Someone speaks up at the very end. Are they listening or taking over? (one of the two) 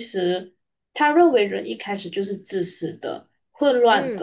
listening